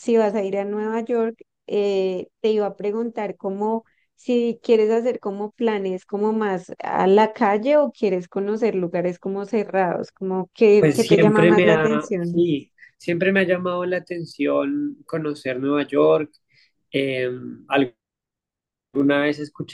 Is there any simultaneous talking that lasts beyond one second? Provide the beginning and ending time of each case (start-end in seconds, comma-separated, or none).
10.8-12.4